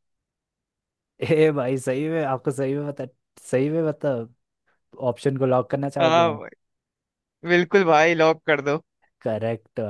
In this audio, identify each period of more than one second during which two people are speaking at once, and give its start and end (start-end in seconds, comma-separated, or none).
none